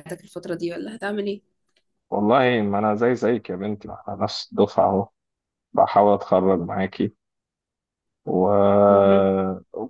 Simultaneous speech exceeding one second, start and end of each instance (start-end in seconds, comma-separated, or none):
none